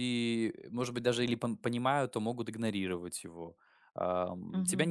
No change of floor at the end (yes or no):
yes